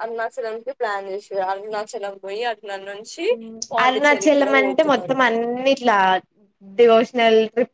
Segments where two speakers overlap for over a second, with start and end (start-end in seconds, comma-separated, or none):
3.8-5.2